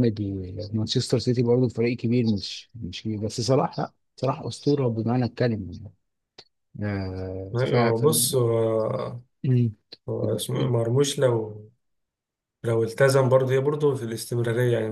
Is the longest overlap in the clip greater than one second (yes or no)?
no